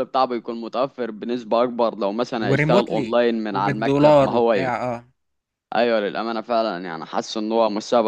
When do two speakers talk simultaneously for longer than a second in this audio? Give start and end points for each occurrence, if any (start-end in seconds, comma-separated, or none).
2.4-4.7